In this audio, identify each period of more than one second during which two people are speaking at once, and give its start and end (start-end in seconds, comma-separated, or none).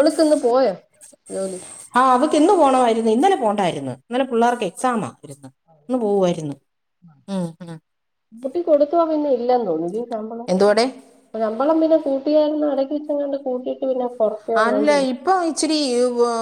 none